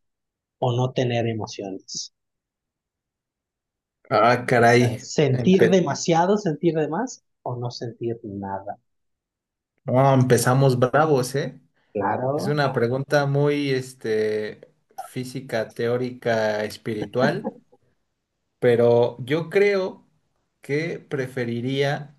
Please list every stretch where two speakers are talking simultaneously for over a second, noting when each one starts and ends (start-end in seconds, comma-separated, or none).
4.6-5.8